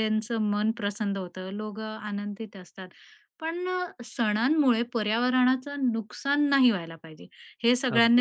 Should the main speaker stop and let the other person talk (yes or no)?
no